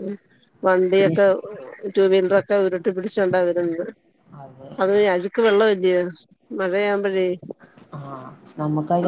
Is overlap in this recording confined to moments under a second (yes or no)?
yes